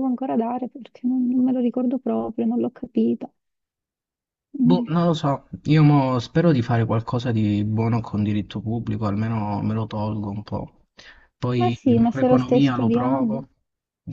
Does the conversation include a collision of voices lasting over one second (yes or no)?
yes